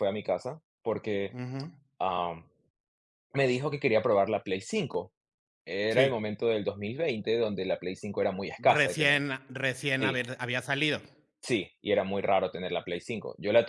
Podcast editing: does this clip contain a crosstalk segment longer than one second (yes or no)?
no